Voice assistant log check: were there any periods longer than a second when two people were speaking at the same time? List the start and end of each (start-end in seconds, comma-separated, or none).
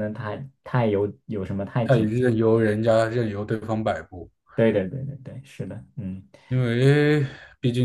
none